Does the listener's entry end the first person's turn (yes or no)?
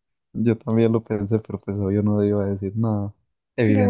yes